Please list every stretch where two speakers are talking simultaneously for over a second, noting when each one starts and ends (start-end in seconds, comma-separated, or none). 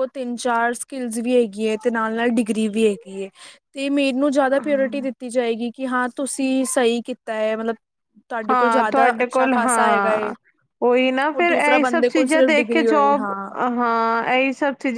8.5-10.3, 11.3-13.2